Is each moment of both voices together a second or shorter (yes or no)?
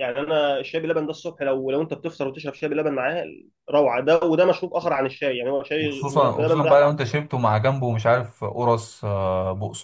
no